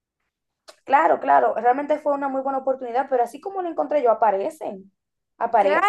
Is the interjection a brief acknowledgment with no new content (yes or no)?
no